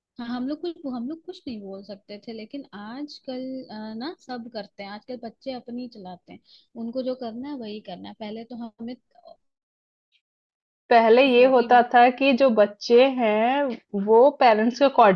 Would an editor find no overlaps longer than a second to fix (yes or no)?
yes